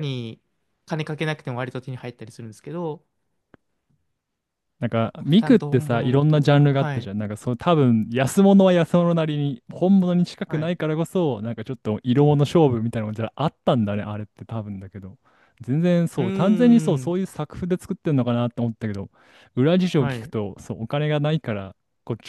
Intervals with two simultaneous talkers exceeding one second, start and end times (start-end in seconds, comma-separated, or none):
5.4-7.1